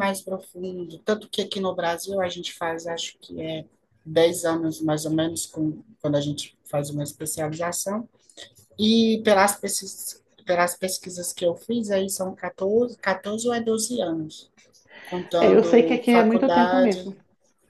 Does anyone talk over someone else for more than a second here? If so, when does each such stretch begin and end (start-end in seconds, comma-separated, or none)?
15.4-17.0